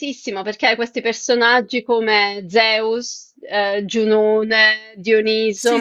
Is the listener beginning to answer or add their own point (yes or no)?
no